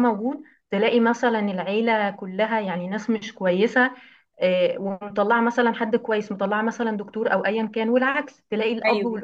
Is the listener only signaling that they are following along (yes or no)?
yes